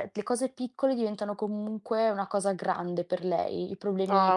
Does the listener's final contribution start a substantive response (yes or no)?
no